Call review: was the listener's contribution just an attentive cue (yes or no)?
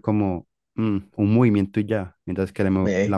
yes